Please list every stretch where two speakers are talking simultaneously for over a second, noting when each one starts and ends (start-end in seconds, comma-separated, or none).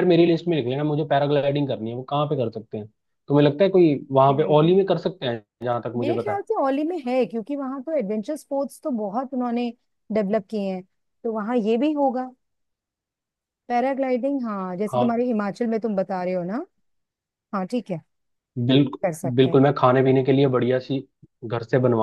none